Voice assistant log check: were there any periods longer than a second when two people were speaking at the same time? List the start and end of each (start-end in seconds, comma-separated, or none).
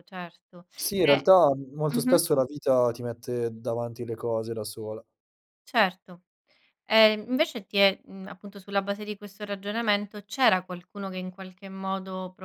none